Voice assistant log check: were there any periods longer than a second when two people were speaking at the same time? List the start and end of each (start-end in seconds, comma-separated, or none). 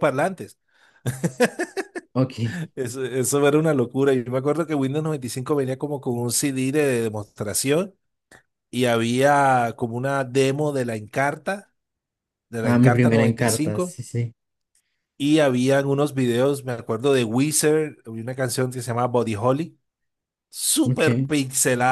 12.6-14.0